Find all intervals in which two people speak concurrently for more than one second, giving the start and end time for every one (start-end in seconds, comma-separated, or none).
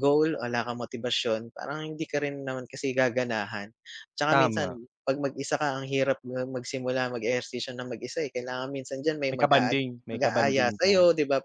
9.3-10.9